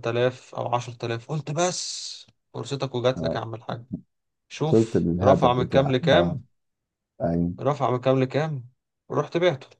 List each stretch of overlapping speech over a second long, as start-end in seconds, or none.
4.7-6.4